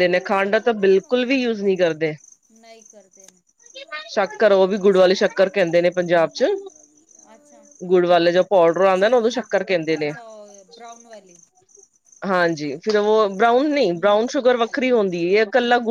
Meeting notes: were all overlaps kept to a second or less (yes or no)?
yes